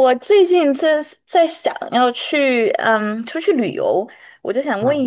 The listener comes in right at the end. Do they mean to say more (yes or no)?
no